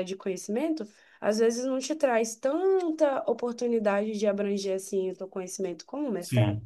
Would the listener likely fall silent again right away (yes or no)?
no